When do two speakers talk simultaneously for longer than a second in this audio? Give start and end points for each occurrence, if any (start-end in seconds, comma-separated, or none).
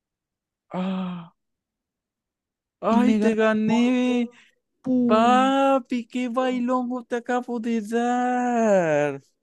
2.9-4.3